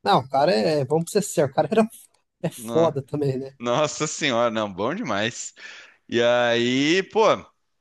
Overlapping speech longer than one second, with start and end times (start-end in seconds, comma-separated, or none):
none